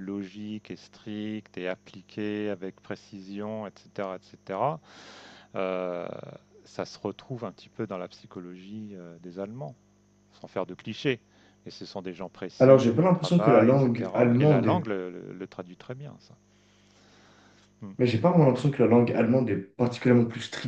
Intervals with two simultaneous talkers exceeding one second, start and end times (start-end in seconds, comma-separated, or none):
12.6-14.9